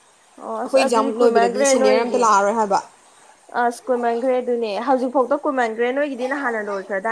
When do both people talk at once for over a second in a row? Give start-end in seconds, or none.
0.6-2.2